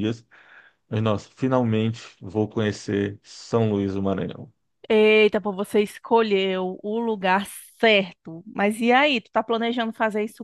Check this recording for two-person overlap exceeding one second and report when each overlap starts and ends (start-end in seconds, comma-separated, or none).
none